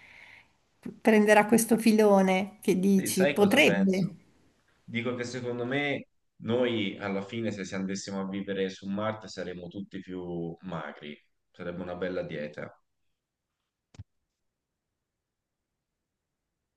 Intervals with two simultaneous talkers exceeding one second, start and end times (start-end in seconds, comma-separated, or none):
2.9-4.1